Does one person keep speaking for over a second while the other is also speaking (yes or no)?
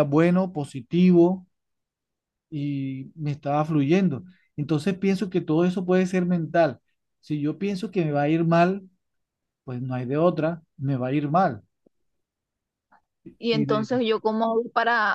no